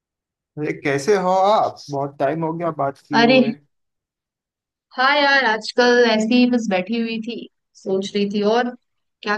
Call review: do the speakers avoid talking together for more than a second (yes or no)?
yes